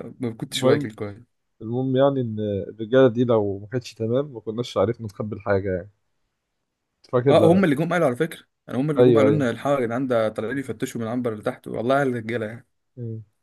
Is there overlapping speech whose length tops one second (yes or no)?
no